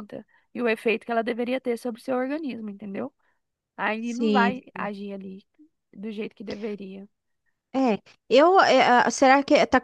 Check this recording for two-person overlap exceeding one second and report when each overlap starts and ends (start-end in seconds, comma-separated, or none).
none